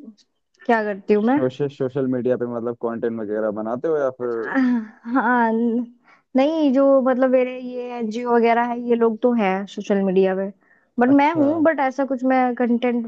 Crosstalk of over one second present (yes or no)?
no